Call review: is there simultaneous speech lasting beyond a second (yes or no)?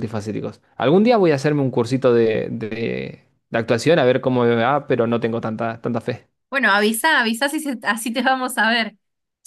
no